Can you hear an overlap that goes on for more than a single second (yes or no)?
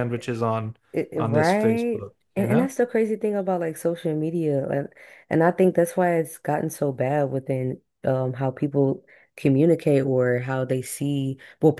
yes